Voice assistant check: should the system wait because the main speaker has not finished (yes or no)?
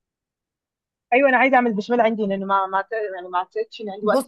no